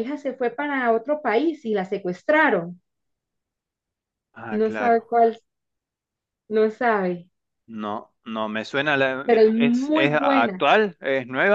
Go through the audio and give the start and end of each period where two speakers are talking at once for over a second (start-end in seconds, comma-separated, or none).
9.2-10.6